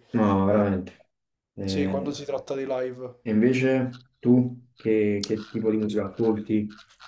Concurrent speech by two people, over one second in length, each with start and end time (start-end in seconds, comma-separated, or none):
none